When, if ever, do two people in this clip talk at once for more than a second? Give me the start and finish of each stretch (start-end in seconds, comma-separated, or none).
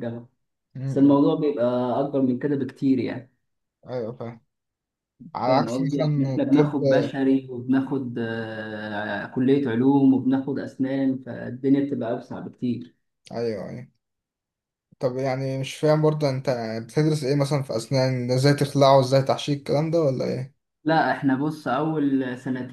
5.5-6.8